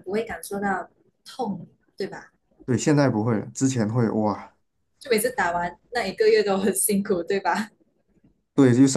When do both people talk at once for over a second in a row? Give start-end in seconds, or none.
none